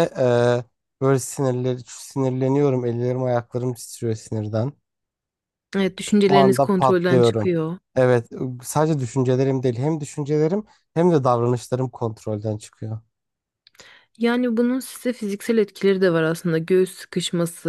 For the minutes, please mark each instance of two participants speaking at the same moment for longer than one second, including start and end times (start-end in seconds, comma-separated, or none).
6.3-7.5